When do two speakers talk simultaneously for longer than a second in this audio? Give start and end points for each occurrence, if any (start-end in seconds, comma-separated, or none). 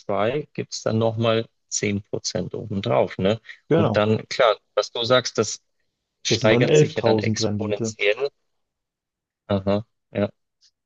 6.2-7.9